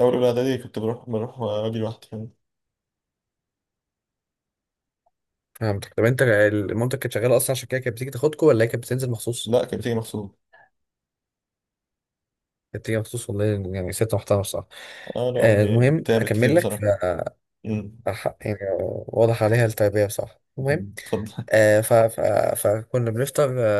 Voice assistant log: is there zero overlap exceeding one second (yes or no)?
no